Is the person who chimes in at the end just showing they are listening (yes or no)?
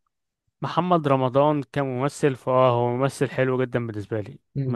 no